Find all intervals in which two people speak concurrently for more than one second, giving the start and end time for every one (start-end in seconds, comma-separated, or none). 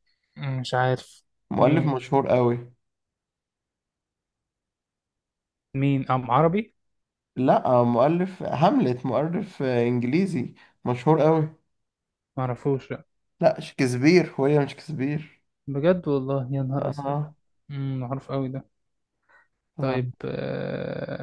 none